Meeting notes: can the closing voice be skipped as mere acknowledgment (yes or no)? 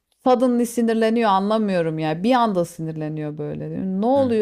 no